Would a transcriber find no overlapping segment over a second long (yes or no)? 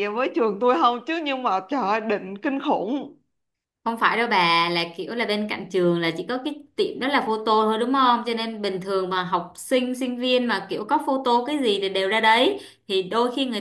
yes